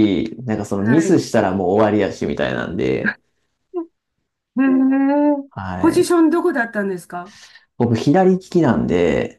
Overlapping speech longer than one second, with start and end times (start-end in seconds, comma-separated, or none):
none